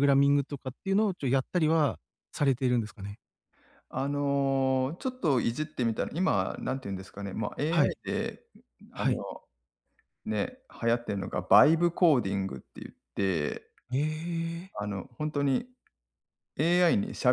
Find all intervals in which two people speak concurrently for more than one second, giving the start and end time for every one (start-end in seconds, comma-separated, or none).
none